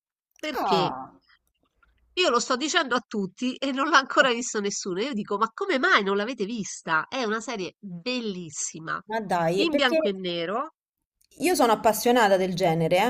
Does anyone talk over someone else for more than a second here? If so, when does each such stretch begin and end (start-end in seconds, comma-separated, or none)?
none